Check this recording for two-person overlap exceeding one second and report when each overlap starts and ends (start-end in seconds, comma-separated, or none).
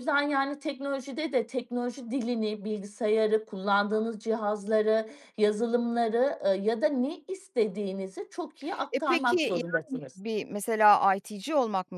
8.9-10.2